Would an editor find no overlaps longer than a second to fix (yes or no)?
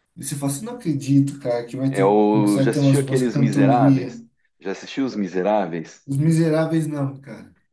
no